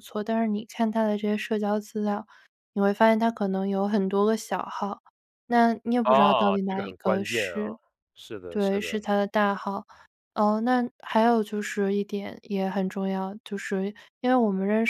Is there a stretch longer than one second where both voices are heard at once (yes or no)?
yes